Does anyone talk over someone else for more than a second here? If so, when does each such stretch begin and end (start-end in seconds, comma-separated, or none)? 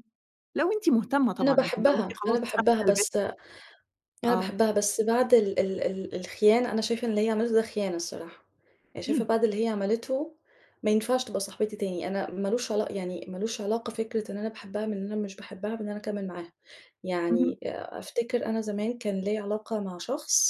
1.4-3.0